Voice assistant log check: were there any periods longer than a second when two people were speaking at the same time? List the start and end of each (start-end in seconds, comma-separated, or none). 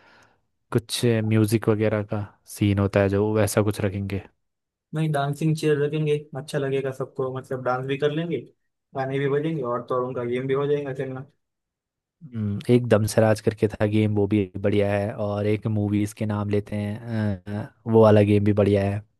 none